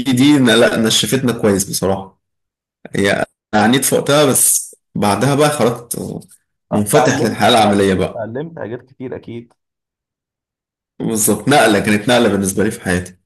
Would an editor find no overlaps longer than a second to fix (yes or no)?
no